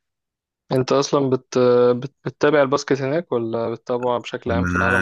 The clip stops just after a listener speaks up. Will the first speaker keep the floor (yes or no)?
no